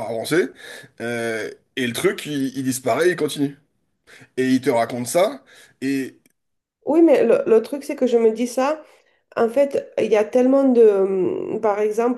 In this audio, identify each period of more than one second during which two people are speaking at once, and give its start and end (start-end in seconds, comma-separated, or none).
none